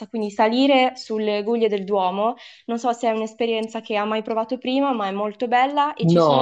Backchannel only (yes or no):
no